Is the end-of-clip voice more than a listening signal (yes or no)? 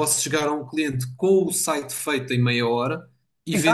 no